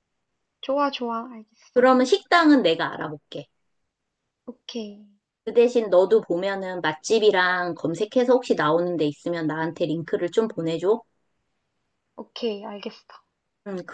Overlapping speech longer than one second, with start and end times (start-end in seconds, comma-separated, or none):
none